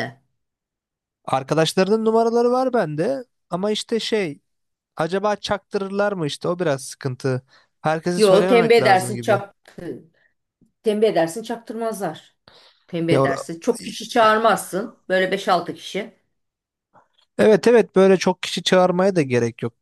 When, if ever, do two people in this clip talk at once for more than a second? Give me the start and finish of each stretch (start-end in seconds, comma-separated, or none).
8.2-9.4